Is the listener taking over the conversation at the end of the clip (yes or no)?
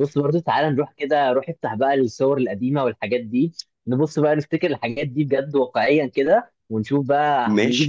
yes